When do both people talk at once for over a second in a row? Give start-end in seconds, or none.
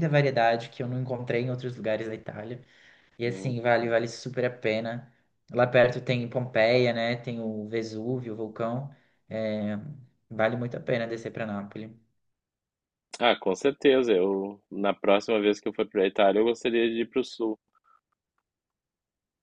none